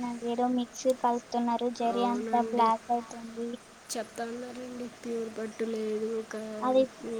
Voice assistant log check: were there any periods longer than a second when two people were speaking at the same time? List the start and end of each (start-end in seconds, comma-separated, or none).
none